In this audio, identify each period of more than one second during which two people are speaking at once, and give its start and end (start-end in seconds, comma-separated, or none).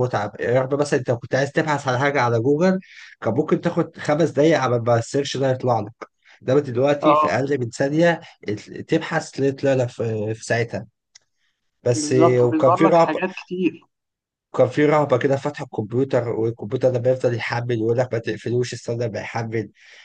11.9-13.2